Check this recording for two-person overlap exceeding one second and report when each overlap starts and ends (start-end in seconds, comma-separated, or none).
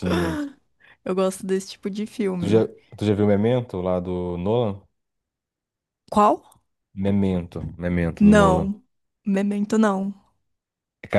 none